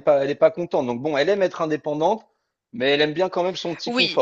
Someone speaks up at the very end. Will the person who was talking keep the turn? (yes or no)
no